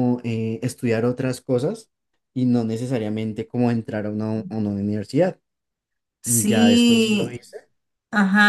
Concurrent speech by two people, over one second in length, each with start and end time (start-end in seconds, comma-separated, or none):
6.2-7.4